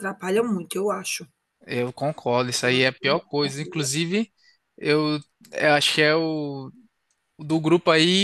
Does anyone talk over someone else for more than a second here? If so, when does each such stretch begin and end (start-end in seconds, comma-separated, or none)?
2.6-3.9